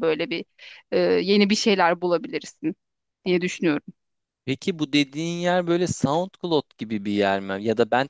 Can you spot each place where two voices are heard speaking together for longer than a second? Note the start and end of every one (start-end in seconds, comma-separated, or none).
none